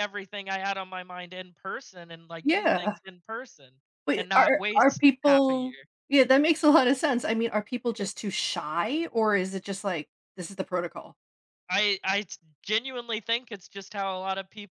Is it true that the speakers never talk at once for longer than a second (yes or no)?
no